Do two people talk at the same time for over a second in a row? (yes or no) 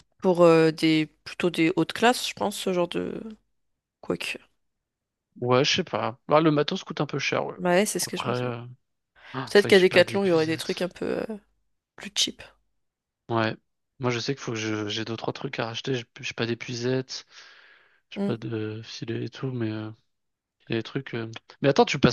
yes